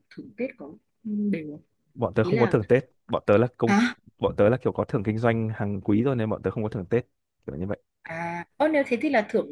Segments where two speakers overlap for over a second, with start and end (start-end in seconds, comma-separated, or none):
none